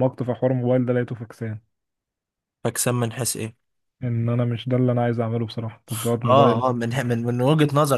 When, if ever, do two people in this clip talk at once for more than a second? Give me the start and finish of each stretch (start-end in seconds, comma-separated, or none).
none